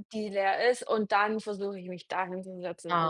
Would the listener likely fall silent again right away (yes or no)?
no